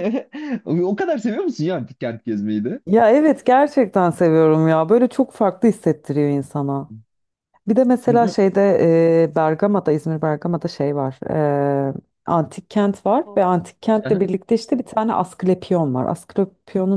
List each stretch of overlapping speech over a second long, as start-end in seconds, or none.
none